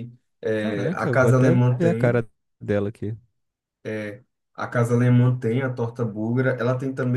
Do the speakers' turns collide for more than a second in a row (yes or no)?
yes